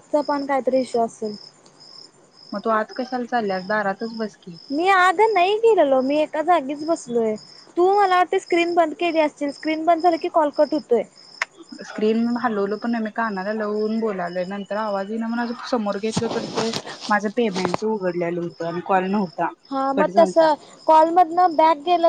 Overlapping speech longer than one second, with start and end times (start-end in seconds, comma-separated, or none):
none